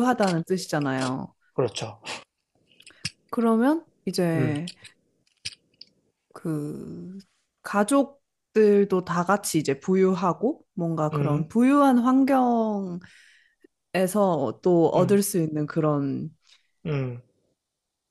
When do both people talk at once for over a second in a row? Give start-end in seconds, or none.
none